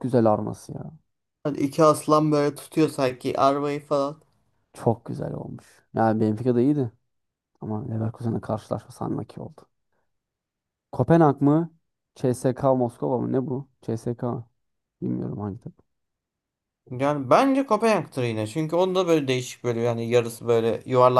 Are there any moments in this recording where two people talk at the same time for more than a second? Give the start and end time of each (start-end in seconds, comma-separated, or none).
none